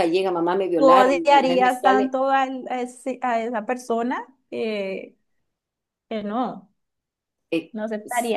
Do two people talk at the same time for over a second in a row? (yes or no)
yes